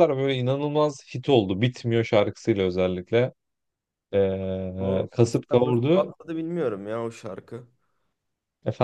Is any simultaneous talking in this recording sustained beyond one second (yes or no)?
yes